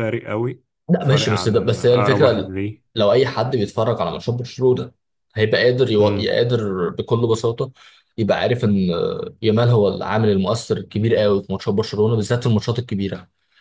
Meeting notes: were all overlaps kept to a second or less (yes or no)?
no